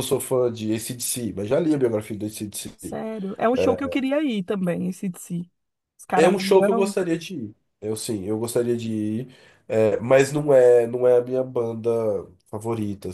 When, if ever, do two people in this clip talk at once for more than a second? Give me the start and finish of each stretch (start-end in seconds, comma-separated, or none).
none